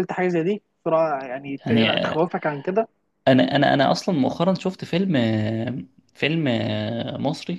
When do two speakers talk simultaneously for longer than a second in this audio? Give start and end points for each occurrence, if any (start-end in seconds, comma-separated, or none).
none